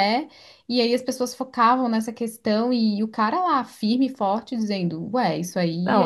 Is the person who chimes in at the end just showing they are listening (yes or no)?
no